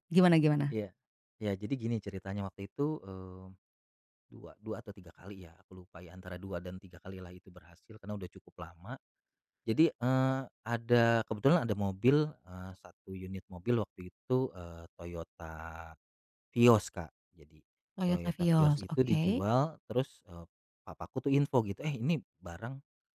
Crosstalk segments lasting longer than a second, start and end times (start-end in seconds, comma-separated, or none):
18.1-19.4